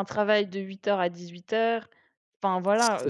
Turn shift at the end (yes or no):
yes